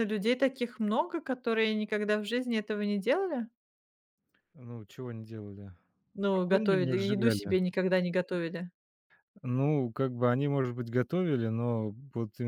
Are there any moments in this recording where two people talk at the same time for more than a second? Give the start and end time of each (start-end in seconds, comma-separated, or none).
6.3-7.6